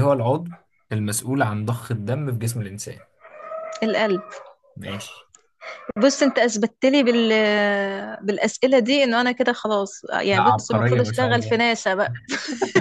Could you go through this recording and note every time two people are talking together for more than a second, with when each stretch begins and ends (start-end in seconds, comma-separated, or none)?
10.3-11.5